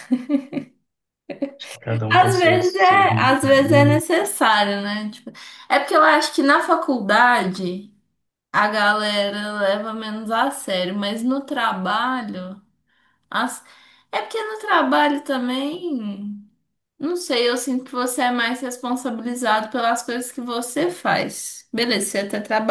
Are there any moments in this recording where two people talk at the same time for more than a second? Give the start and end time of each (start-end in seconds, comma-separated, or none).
2.1-3.5